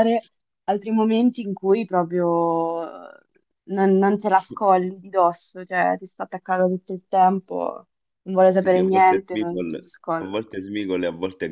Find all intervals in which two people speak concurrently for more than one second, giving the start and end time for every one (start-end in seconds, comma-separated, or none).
8.6-10.4